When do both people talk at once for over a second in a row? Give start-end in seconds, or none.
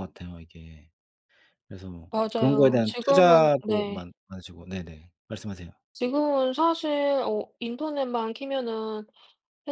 2.1-4.0